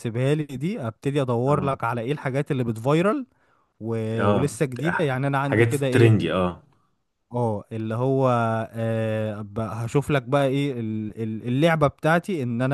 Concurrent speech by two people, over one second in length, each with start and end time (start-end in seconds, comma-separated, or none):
4.2-6.1